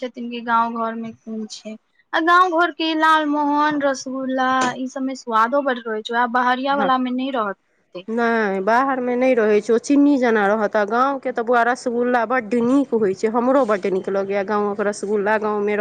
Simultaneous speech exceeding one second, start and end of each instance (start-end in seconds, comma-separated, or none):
none